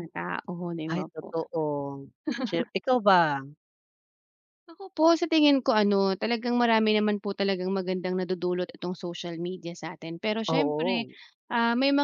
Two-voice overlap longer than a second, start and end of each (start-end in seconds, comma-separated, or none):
none